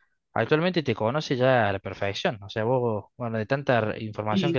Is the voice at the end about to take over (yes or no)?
no